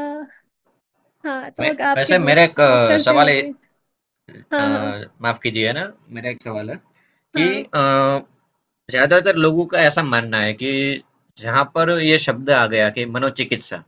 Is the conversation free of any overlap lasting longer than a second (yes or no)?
no